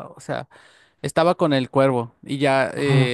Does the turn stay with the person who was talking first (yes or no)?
yes